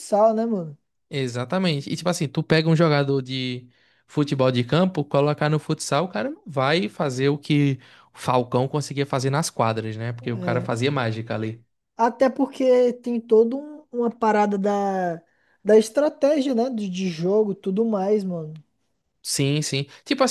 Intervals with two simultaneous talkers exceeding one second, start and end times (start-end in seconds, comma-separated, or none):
none